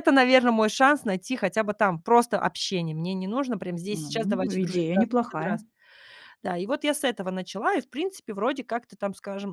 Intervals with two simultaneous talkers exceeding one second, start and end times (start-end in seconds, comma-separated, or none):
3.9-5.6